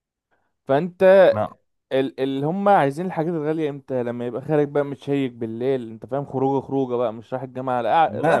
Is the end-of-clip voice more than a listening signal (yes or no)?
yes